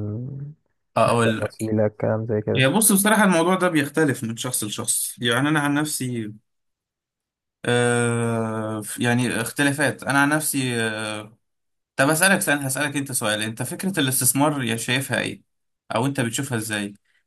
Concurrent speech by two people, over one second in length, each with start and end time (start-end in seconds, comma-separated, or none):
none